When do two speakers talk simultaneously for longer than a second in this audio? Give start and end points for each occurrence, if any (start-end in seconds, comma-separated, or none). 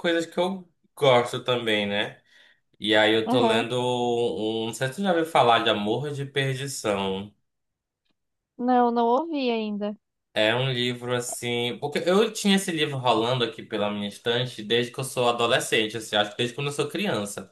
none